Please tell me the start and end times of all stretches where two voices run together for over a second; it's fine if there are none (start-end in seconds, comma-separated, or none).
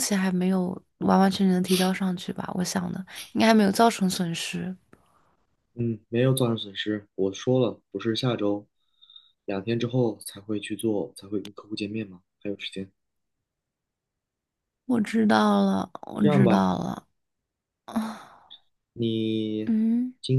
none